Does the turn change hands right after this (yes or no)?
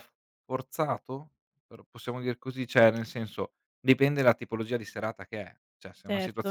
yes